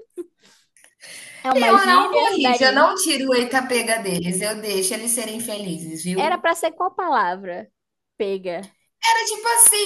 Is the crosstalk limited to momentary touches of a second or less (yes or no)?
no